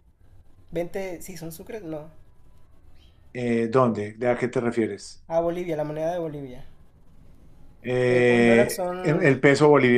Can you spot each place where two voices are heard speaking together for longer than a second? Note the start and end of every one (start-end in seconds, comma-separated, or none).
8.1-9.4